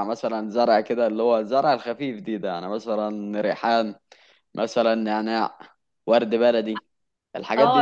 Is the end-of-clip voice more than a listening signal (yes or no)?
yes